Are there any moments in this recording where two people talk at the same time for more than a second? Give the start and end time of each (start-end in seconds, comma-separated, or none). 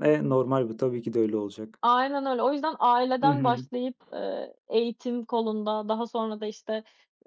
none